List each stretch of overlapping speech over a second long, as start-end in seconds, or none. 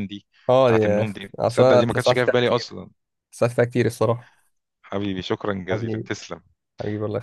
0.7-2.7